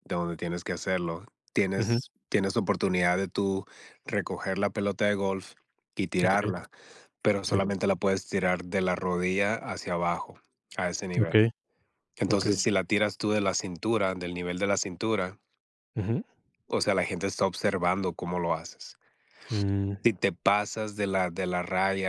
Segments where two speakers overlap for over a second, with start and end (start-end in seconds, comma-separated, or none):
none